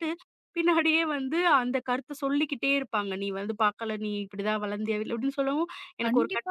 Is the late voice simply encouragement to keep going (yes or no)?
no